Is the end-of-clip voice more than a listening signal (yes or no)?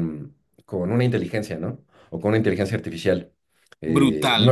yes